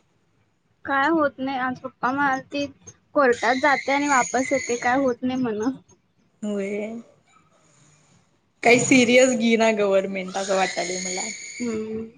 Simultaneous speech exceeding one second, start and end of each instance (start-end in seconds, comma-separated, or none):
none